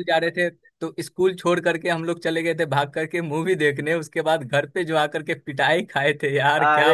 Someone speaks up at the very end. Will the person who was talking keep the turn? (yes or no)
no